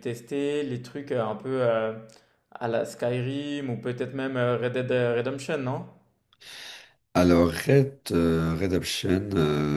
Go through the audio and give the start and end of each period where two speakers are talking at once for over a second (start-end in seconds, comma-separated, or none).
none